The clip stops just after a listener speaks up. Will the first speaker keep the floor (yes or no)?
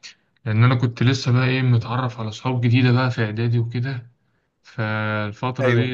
yes